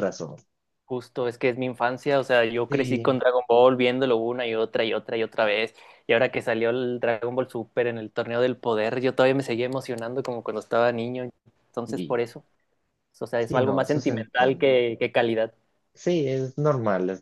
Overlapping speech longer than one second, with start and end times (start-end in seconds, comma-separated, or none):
13.4-14.7